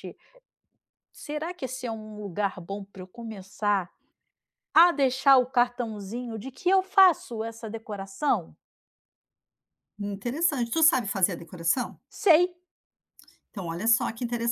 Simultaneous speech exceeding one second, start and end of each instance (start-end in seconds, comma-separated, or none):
none